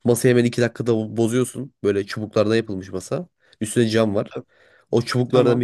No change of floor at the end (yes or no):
yes